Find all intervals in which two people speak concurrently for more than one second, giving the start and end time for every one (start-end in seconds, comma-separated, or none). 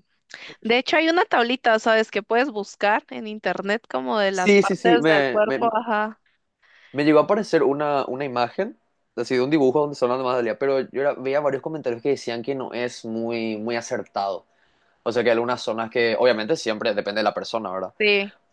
4.3-5.7